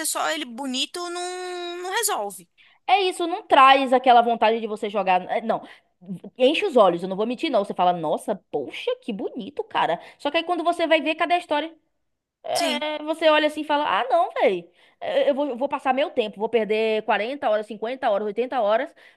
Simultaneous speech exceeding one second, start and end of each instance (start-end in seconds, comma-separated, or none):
none